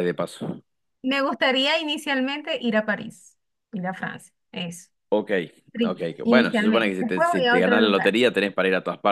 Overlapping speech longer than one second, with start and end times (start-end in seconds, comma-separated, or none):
5.8-8.2